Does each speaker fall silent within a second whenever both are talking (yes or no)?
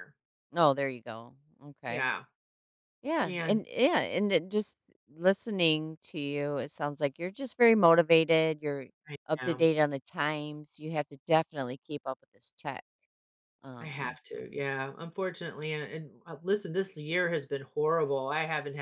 yes